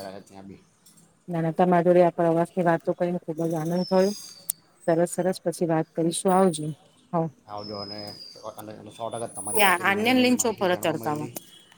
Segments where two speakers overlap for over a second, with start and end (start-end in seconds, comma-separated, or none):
9.6-11.3